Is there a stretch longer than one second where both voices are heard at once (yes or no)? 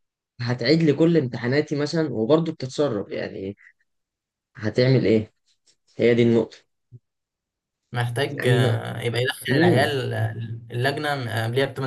no